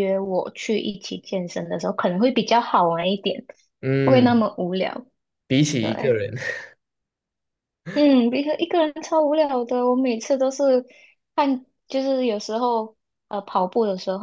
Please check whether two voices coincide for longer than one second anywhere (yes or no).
no